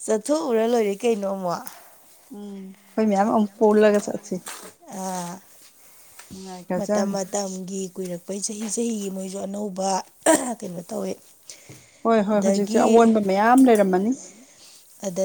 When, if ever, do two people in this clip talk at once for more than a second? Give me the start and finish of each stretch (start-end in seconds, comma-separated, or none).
none